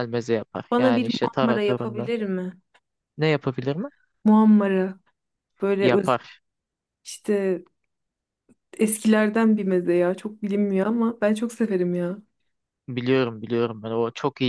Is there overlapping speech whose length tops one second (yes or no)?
yes